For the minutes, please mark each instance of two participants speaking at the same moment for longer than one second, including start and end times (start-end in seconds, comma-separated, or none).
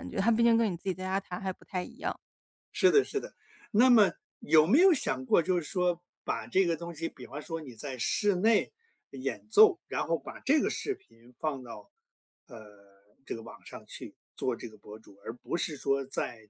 none